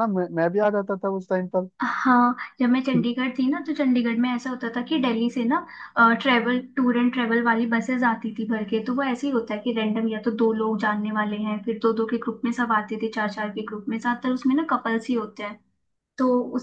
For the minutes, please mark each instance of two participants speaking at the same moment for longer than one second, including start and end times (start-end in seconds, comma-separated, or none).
none